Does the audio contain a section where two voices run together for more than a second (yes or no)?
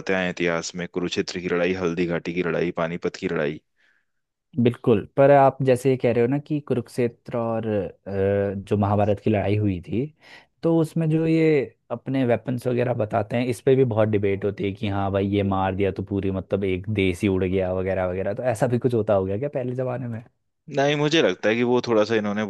no